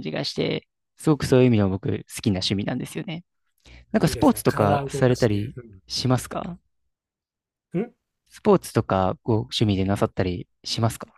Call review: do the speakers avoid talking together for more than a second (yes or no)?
no